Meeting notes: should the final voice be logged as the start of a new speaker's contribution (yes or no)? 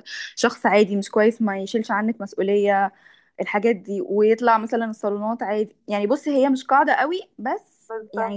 no